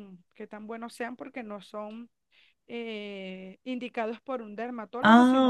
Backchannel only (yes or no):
yes